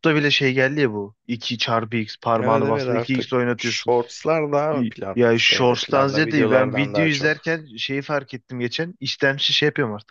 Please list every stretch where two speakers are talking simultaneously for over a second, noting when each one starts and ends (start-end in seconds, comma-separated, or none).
2.4-3.9, 4.7-7.5